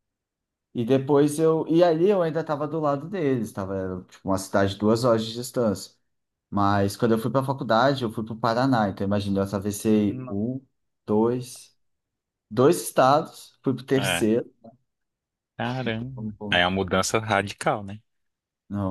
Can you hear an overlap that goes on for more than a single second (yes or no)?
no